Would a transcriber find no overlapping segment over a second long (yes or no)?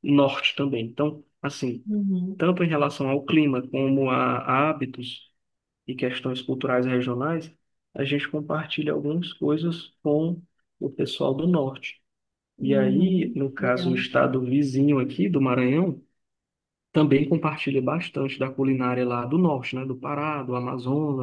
no